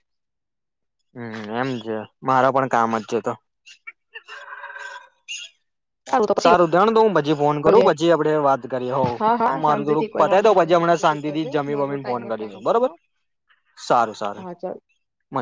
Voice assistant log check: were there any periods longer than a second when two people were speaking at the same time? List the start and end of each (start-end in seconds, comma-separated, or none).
9.6-12.9